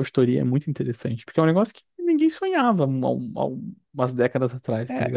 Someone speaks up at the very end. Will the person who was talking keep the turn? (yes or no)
no